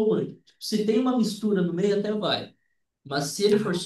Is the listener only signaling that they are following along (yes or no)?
yes